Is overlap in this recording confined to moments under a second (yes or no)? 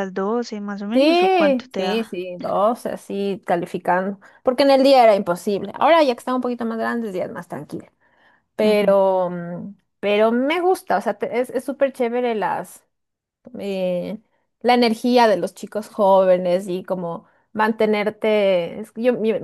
no